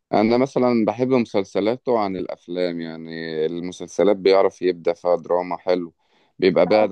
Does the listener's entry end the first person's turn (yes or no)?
no